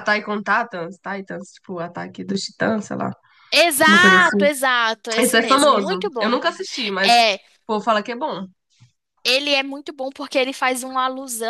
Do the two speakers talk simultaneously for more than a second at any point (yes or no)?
yes